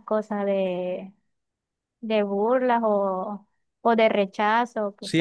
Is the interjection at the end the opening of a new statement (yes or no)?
yes